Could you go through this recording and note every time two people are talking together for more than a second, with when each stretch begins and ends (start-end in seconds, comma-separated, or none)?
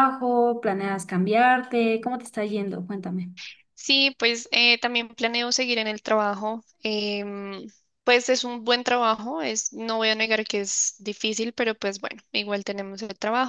none